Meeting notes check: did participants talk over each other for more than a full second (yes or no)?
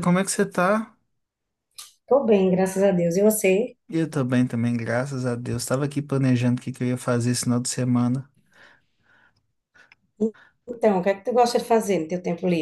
no